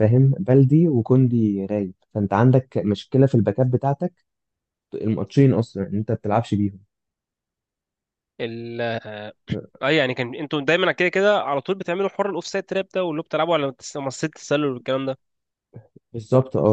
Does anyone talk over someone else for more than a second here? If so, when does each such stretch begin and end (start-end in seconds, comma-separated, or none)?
none